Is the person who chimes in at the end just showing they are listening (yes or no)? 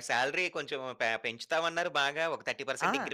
yes